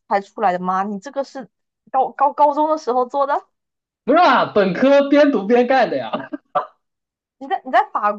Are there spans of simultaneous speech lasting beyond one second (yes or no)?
no